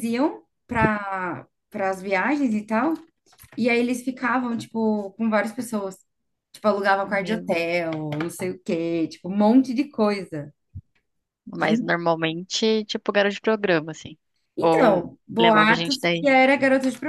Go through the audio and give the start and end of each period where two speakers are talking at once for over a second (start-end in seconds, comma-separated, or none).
14.6-16.3